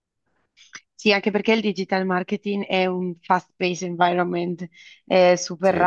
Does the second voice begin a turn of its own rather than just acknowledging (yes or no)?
no